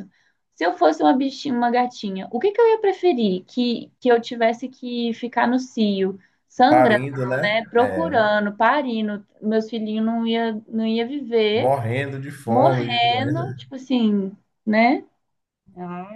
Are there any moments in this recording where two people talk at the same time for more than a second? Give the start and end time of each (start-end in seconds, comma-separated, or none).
6.7-8.2, 12.5-13.7